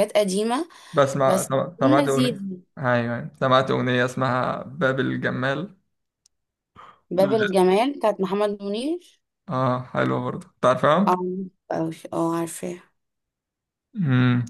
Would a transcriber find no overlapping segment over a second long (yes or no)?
no